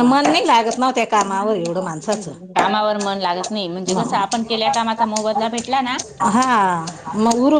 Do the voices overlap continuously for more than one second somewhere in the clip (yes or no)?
no